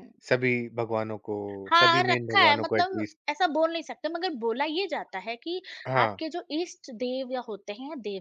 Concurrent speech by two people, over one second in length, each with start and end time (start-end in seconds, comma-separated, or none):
1.8-3.2